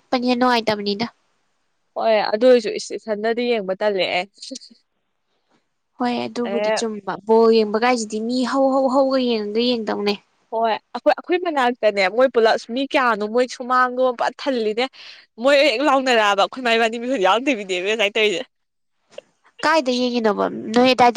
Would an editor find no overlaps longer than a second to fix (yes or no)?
yes